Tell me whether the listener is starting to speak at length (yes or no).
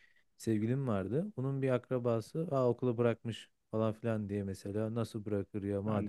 no